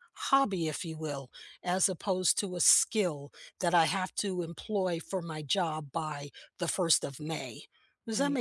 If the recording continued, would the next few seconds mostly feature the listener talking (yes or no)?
yes